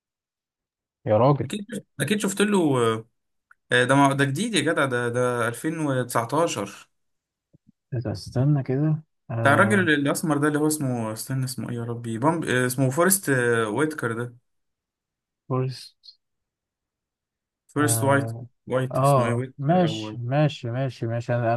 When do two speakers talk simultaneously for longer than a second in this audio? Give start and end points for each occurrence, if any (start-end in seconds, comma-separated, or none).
18.9-20.2